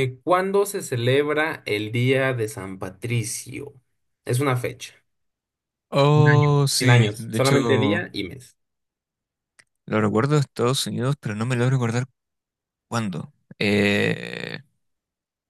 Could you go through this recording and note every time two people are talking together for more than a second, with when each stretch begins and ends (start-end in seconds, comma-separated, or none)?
6.1-8.1